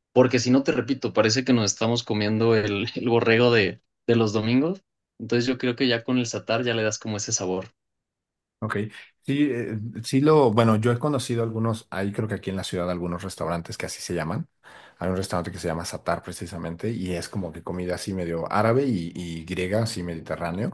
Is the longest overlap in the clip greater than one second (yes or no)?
no